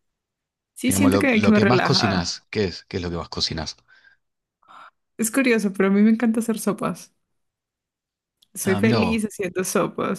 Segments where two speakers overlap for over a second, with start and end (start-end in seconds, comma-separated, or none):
0.8-2.5